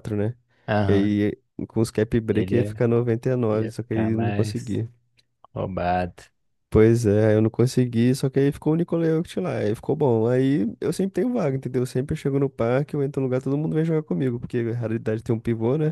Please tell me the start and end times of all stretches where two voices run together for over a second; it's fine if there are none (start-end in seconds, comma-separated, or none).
3.5-4.8